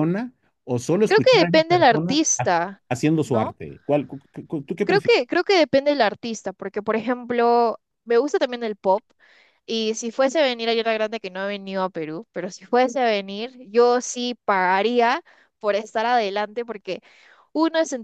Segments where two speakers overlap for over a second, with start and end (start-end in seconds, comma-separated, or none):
1.1-2.5